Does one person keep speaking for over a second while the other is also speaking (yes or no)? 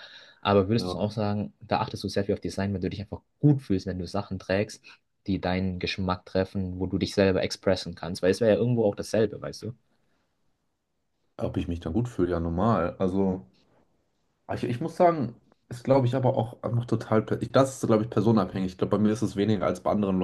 no